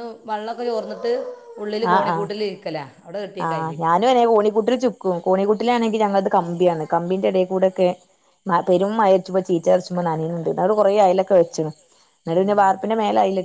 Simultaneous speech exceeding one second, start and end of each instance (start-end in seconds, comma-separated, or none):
none